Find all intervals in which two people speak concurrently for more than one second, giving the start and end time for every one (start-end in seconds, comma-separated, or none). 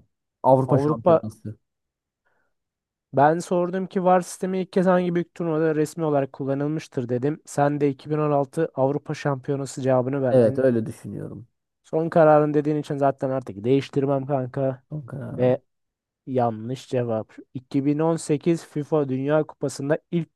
none